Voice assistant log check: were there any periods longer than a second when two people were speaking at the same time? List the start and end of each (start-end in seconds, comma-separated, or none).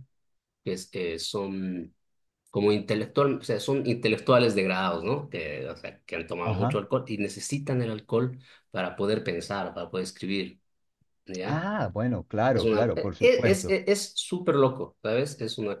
12.5-13.8